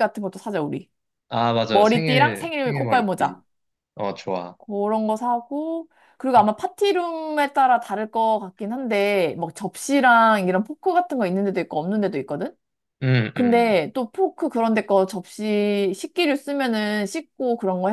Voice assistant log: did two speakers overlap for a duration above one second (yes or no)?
yes